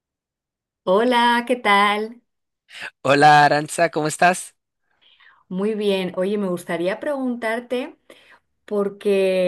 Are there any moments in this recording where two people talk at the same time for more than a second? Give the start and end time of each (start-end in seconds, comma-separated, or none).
none